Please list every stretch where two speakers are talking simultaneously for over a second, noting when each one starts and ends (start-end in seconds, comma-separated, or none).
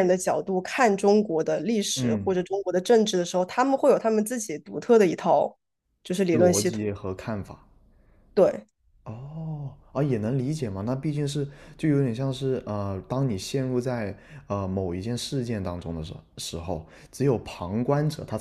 none